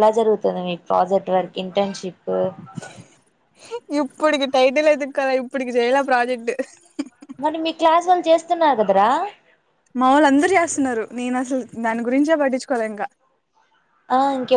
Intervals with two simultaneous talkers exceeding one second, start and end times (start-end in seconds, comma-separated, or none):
none